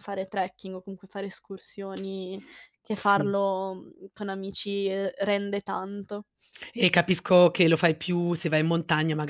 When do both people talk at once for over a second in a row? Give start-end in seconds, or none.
none